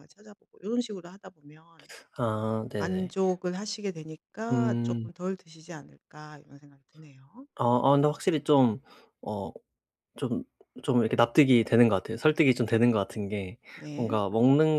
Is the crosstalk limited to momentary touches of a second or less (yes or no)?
yes